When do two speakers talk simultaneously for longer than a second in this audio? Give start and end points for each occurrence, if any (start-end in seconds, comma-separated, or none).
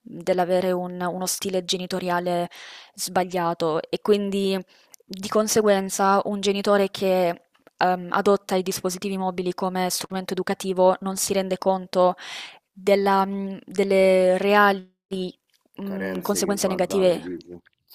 15.8-17.2